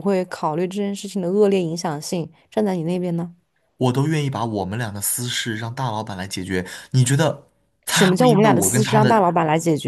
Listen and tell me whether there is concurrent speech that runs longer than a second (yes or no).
yes